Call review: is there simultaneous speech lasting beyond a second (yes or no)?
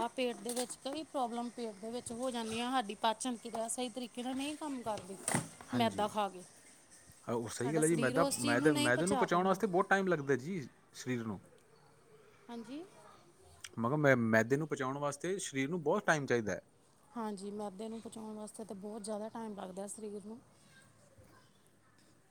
yes